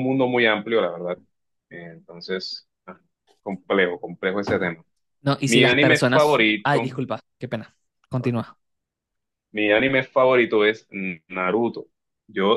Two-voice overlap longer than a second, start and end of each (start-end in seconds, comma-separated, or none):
5.5-6.9